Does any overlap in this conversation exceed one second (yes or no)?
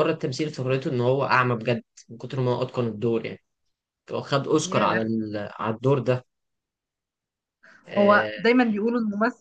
no